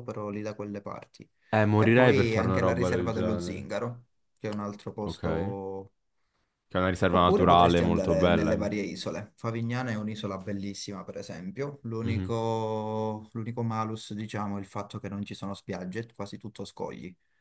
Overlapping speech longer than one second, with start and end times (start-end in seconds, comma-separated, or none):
1.8-3.7, 7.1-8.6